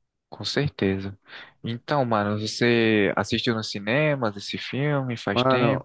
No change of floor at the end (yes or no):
no